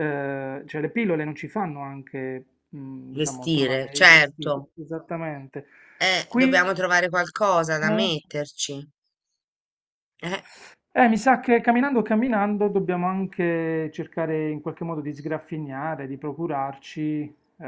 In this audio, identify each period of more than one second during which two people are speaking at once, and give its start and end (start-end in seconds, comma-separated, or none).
3.1-4.7